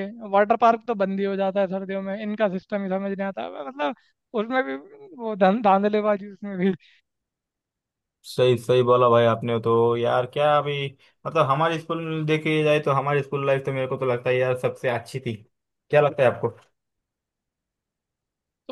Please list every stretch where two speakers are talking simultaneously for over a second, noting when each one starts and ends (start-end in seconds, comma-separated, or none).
none